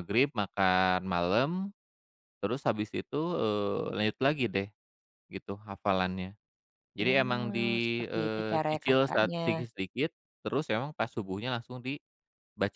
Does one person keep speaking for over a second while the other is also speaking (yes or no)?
yes